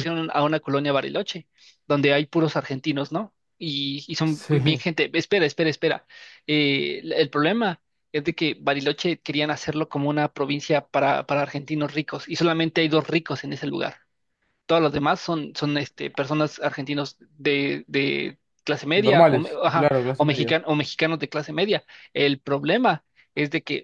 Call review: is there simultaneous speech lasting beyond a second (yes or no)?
yes